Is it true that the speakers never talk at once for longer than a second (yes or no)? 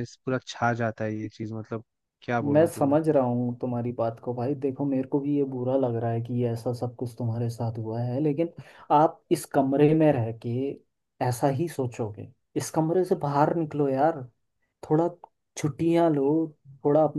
yes